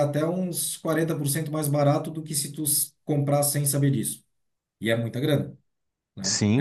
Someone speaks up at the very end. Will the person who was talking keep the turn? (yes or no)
no